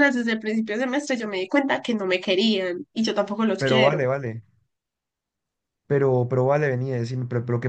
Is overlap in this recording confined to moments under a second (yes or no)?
yes